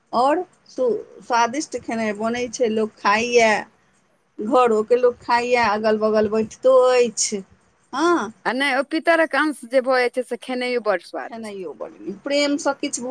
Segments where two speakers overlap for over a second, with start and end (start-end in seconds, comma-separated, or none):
none